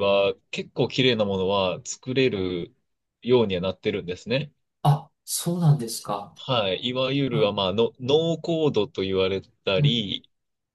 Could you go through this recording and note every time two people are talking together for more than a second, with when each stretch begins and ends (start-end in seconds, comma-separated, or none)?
none